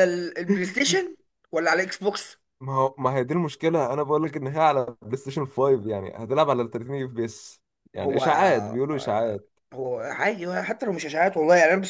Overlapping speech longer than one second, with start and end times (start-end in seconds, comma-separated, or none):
8.0-9.4